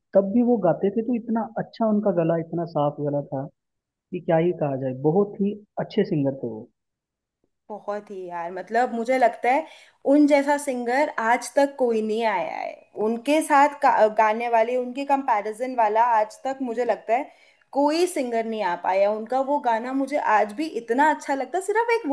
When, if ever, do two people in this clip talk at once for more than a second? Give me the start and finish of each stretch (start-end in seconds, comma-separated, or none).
none